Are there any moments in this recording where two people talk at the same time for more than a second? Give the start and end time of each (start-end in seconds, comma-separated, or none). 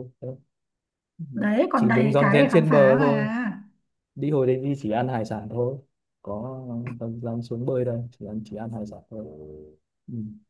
1.7-3.1